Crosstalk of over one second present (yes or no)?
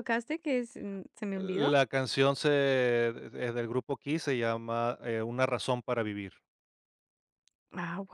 no